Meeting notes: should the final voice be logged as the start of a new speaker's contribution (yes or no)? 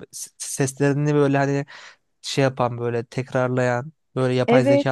yes